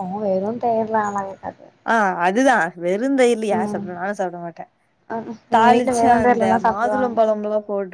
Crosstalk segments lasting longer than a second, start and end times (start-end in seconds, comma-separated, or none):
5.6-7.2